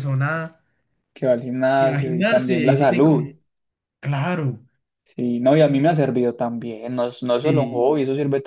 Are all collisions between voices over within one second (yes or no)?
no